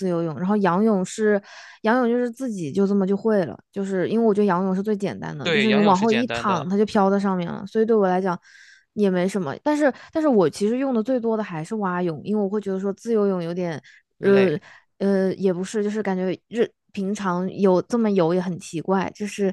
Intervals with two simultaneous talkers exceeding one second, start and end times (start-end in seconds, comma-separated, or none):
5.4-6.7